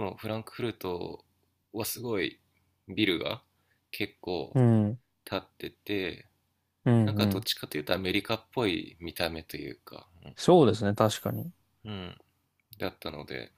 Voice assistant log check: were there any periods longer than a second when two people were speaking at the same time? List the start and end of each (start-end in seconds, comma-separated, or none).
none